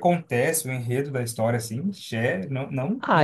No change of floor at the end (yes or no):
no